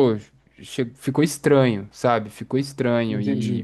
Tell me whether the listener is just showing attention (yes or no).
yes